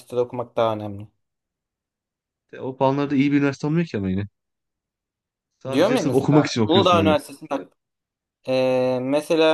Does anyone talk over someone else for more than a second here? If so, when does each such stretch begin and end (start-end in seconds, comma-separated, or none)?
5.7-7.1